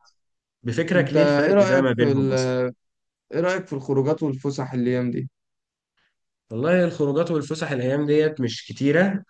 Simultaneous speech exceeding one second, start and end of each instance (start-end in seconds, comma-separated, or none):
0.9-2.3